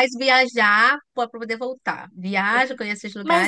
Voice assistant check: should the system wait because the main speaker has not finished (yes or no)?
no